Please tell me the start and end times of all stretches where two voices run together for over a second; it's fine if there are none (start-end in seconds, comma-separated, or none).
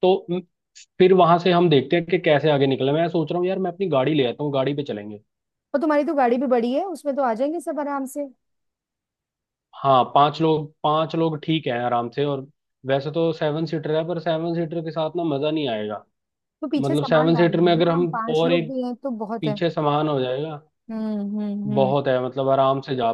16.8-18.7